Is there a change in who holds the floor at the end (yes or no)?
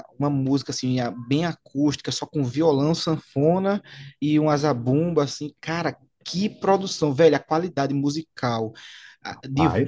no